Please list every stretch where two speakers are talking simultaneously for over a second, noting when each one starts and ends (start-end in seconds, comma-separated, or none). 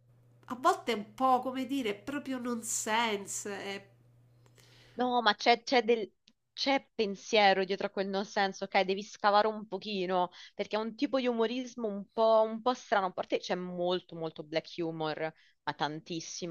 none